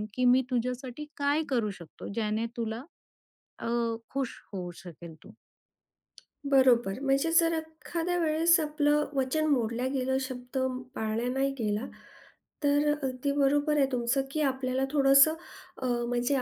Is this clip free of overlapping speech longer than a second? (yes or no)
yes